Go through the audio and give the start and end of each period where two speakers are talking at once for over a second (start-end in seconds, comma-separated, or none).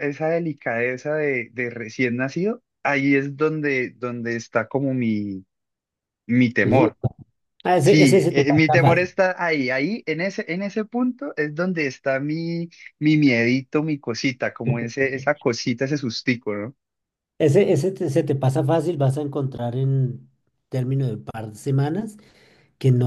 7.8-9.1